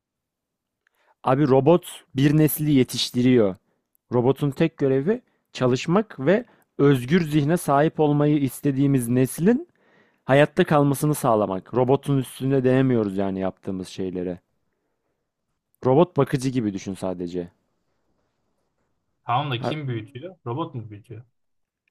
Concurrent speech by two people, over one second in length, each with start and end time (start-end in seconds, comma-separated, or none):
none